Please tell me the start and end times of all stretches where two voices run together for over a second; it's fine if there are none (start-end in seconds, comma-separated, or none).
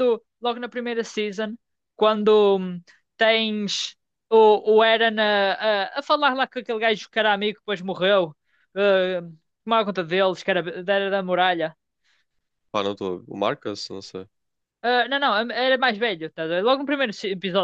none